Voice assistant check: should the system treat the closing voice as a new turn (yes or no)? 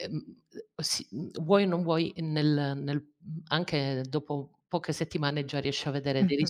no